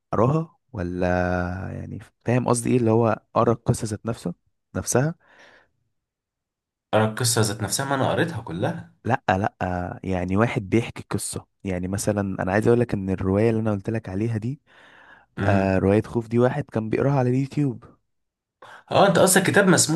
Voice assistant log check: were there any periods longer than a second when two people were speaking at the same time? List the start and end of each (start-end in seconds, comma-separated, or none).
none